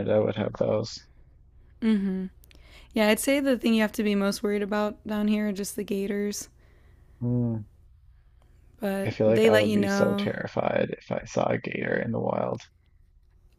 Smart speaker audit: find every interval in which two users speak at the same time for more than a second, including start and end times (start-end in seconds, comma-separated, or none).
9.1-10.3